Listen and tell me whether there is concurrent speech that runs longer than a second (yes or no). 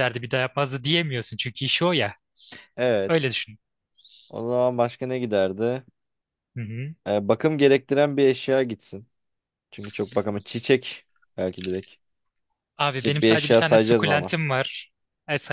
yes